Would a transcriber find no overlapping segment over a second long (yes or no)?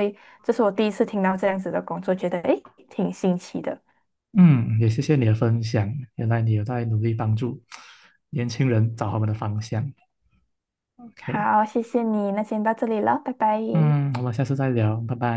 yes